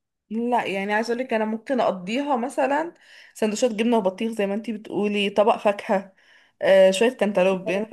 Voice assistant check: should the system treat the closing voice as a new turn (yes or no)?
no